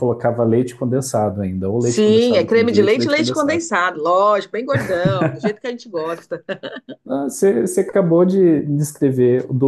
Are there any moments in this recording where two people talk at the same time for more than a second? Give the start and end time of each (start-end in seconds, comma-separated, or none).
1.8-3.6